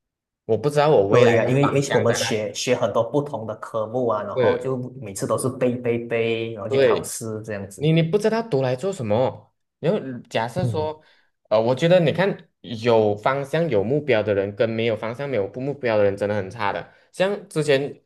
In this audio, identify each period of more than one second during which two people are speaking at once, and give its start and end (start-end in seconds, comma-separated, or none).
1.1-2.4